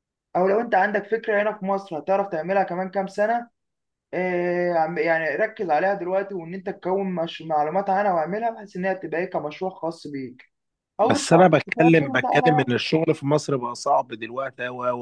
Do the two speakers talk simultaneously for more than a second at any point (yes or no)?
yes